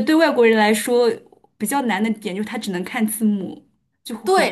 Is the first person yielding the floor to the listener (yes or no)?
yes